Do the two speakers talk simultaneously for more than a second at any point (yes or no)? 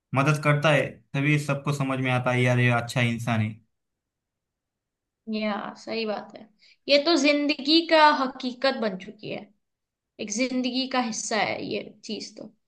no